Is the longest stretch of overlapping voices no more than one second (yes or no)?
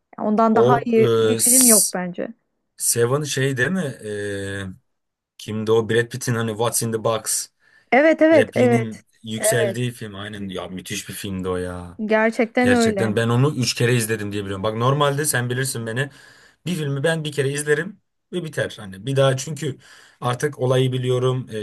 no